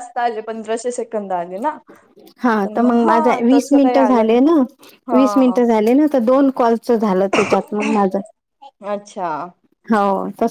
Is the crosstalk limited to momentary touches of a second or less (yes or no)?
no